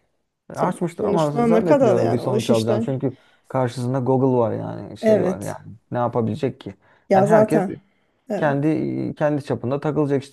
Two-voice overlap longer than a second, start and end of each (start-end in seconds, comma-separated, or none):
0.5-2.9